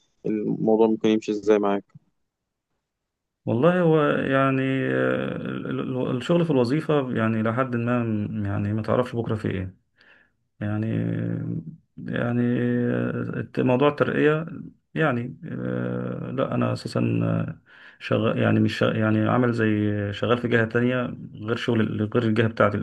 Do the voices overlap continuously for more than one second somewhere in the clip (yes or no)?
no